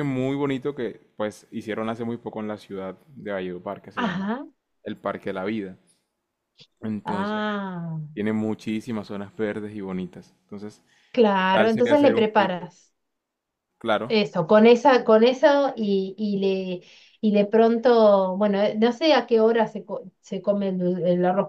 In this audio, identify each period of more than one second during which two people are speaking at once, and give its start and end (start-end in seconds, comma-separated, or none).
11.4-12.7